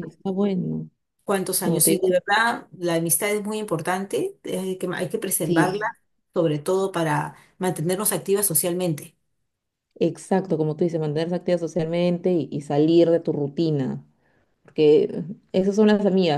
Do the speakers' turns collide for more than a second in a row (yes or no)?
no